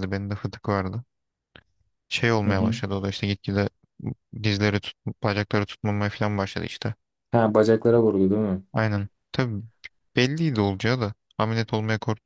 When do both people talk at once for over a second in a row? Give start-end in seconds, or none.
none